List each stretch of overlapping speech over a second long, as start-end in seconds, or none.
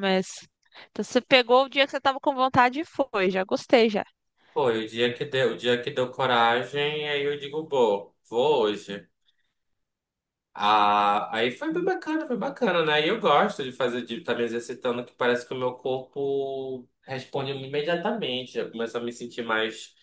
none